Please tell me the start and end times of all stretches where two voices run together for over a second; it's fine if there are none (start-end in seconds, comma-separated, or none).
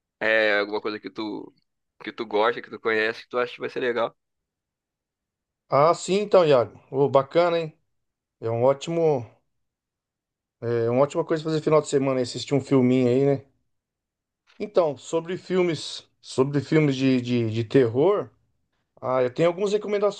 none